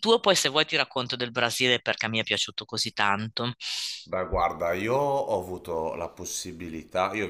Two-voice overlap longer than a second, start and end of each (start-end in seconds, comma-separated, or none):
none